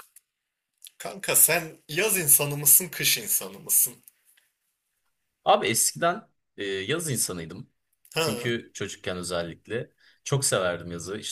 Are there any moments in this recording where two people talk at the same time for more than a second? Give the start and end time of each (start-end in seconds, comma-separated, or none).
none